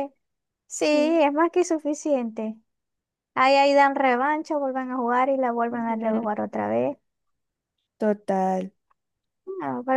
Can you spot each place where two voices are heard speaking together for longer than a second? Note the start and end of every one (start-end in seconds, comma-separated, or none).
none